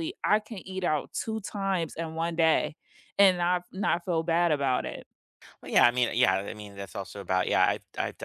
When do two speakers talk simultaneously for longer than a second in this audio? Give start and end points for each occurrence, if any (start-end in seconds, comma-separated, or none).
none